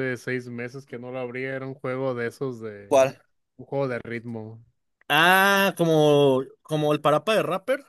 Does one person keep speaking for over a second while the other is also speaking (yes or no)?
no